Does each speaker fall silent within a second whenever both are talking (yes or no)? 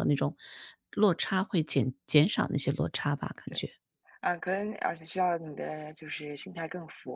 yes